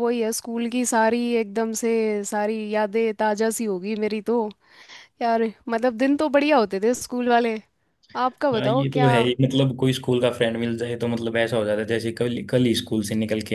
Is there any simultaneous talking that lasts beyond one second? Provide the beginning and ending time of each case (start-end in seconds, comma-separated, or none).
none